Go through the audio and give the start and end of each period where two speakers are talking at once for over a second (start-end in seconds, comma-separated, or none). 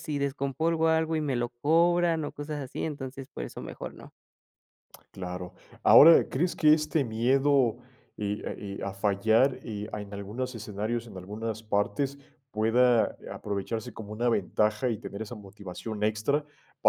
none